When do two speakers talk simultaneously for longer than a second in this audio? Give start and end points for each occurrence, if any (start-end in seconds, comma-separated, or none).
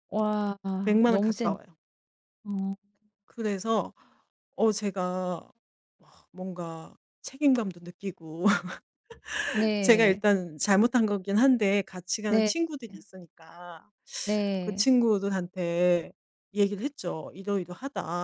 none